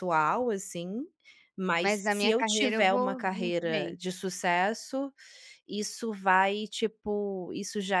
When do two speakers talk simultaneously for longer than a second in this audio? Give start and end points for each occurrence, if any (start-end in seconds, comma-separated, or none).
1.8-4.0